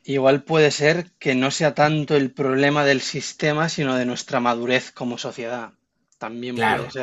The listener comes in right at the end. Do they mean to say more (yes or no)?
yes